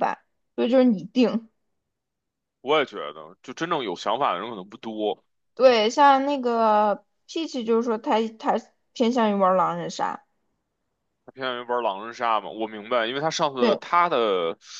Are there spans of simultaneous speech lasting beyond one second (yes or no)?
no